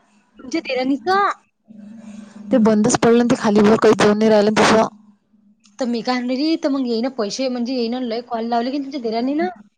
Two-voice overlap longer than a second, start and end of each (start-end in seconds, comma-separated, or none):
none